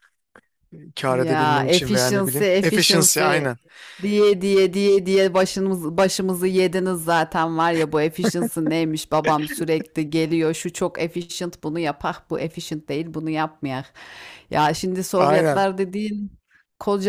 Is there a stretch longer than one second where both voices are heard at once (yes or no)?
yes